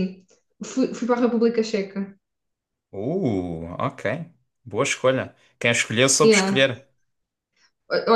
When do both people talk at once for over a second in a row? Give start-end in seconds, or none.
none